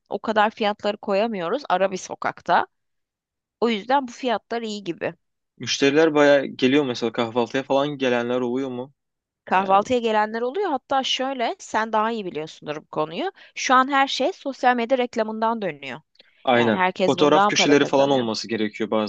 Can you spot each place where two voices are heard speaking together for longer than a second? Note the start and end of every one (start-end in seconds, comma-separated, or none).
16.5-18.3